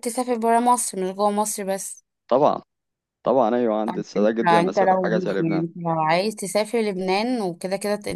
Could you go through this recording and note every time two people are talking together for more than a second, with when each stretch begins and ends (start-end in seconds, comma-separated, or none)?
3.8-5.7